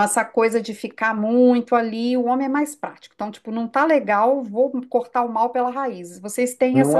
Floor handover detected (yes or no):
yes